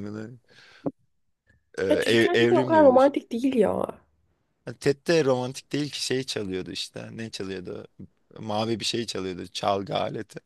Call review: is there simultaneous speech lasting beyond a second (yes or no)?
yes